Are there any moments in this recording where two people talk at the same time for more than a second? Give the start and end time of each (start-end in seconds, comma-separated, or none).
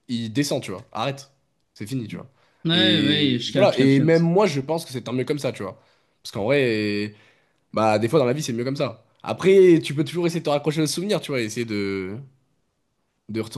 2.7-4.3